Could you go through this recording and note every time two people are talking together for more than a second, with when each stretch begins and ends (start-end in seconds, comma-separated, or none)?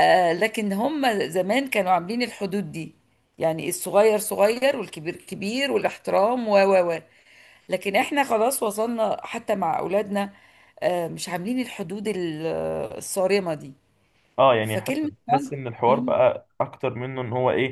14.6-16.2